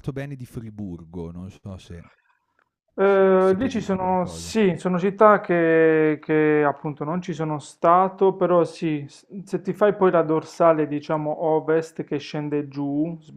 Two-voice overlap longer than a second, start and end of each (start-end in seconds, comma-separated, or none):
3.0-4.5